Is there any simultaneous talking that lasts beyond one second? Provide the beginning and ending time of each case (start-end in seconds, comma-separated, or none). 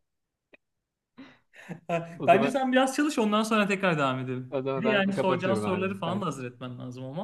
4.5-6.2